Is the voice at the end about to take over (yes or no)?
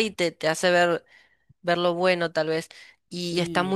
no